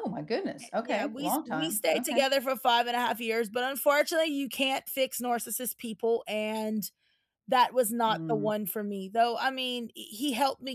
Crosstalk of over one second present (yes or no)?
yes